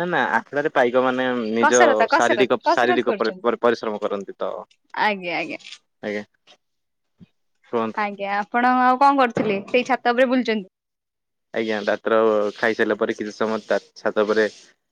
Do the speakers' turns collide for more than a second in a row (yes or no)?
yes